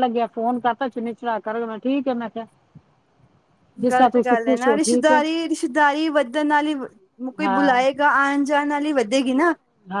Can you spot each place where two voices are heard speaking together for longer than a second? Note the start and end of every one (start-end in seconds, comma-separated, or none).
3.9-5.2